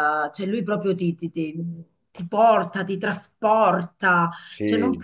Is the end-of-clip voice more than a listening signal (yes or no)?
no